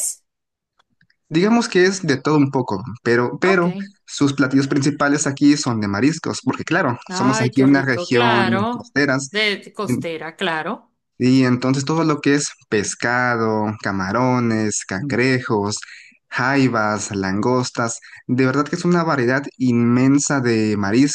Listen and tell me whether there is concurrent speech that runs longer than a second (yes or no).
yes